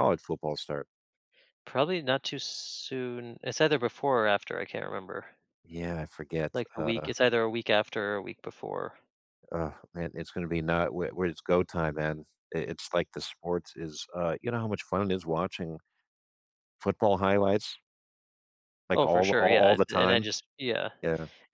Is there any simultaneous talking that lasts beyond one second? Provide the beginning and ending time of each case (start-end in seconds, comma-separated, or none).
18.9-20.2